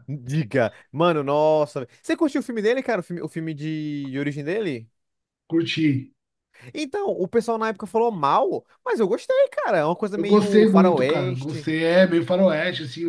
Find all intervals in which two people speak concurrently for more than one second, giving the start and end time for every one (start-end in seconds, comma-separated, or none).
10.2-11.7